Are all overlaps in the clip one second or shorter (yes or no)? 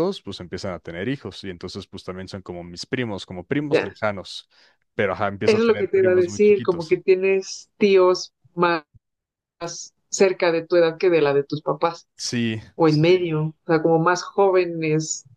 no